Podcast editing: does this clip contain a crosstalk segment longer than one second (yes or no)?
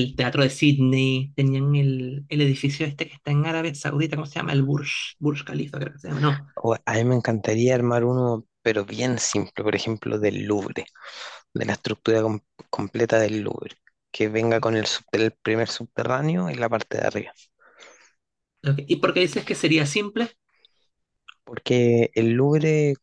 no